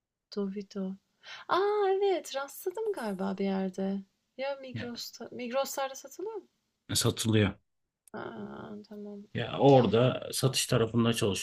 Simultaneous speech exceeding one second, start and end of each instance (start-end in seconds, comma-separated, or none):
none